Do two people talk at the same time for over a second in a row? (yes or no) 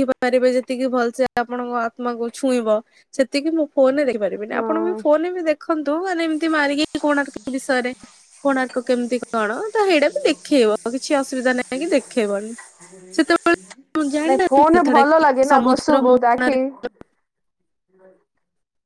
yes